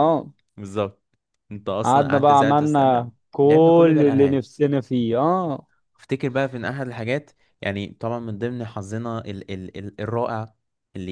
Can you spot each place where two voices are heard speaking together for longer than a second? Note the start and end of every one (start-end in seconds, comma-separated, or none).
1.8-4.4